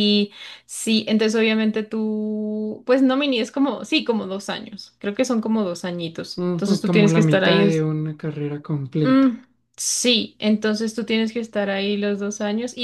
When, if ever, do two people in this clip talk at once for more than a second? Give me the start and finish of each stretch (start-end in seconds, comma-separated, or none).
6.4-7.8